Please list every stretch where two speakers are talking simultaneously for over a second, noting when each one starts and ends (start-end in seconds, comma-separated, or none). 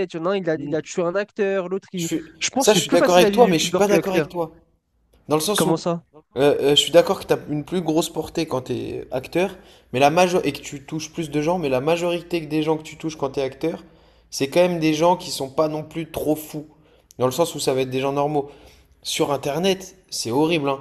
1.9-4.3